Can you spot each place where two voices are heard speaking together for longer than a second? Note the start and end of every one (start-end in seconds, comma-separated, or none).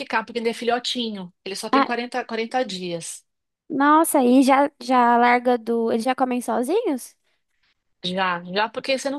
none